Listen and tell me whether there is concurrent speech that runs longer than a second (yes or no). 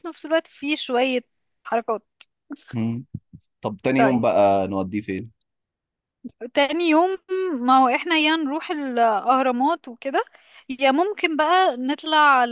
no